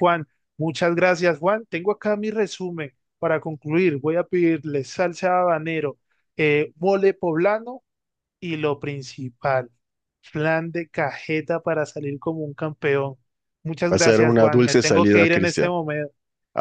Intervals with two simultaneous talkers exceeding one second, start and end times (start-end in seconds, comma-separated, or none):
13.9-15.7